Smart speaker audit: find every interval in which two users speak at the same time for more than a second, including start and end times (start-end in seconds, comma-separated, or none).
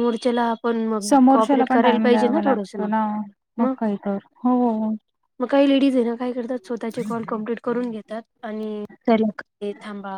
1.1-2.8